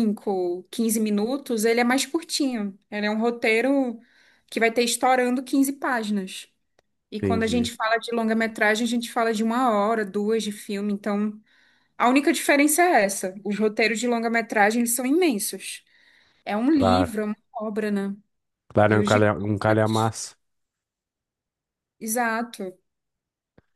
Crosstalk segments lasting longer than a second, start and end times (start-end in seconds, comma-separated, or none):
18.9-20.1